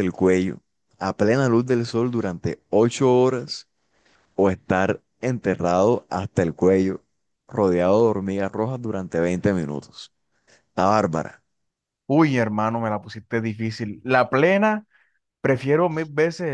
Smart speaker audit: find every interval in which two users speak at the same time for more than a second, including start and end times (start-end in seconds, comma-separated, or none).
none